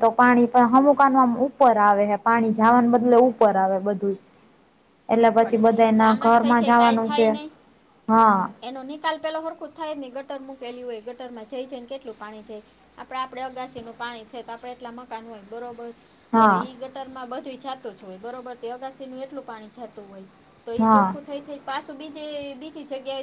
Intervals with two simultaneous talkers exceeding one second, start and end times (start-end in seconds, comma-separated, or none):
5.4-7.3